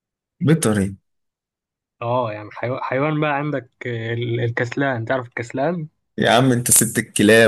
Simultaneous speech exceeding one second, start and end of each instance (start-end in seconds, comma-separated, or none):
none